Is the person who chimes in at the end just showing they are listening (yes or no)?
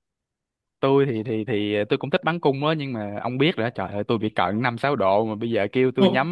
yes